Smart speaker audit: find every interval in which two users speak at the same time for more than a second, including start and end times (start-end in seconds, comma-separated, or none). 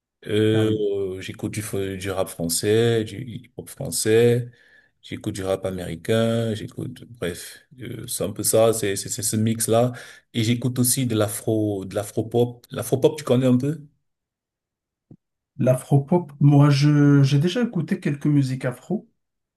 none